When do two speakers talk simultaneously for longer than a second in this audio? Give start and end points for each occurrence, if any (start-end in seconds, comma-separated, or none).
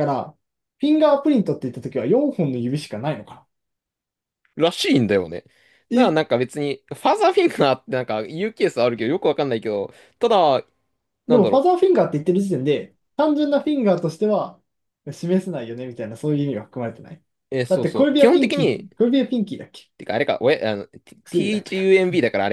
17.7-18.9